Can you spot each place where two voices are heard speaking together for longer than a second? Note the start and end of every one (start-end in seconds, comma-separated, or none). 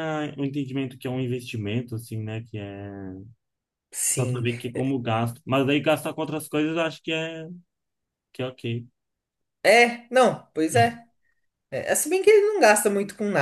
none